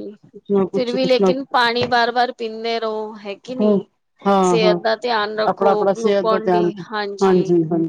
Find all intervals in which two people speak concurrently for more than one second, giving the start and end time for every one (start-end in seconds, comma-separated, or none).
5.5-6.7